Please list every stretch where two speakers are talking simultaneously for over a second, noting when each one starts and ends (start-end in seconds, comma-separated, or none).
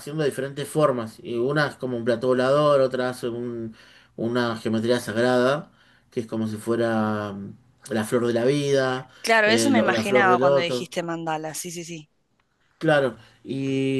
9.4-10.9